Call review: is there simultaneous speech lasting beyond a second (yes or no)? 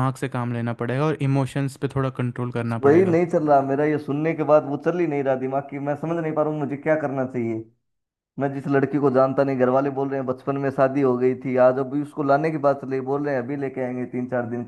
no